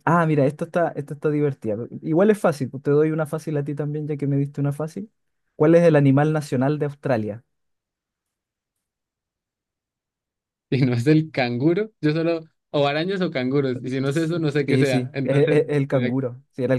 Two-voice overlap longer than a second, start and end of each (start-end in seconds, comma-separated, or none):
14.0-16.1